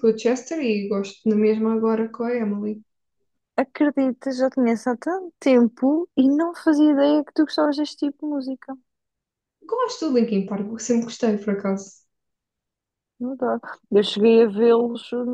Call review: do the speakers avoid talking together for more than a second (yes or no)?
yes